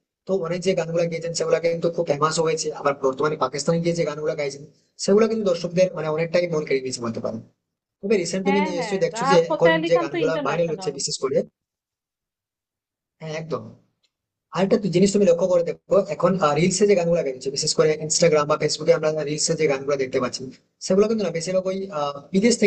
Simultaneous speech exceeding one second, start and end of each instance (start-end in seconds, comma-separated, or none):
8.4-10.9